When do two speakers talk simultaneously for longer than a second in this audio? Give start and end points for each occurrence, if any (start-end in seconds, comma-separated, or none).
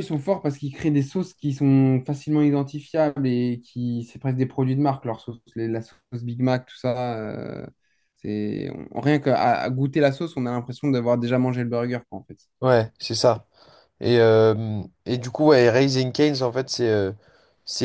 none